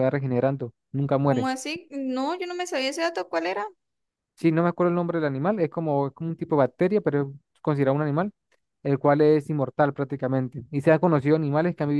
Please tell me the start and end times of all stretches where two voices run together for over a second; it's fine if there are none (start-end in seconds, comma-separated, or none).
none